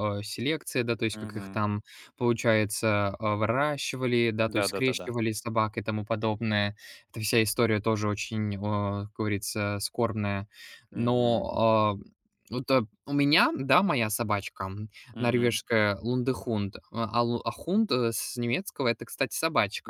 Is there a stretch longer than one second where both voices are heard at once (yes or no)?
no